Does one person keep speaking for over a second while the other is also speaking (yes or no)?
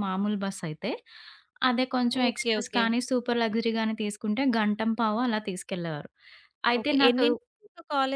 no